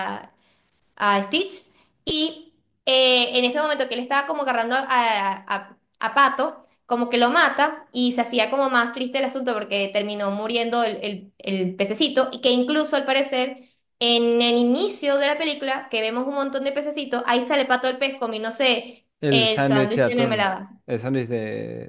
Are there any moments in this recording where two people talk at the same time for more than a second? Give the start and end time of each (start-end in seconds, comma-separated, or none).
19.2-20.7